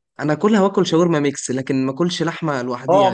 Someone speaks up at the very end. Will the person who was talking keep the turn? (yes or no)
no